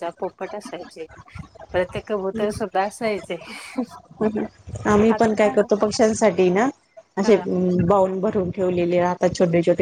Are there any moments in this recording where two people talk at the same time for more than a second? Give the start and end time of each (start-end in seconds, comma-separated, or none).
none